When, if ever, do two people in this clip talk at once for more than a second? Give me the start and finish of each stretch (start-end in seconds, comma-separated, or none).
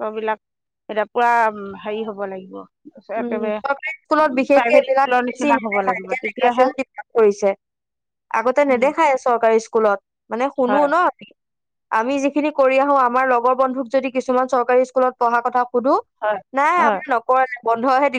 4.5-6.7